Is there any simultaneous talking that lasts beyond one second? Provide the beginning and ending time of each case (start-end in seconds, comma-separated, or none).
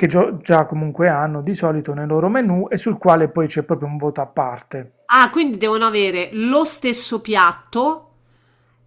none